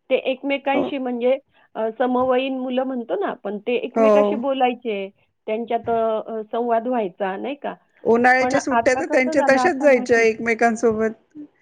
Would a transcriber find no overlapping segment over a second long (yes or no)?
no